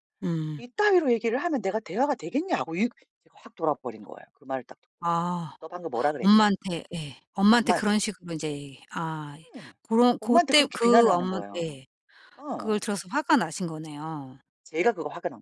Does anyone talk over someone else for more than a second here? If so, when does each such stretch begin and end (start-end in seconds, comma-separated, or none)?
10.2-11.8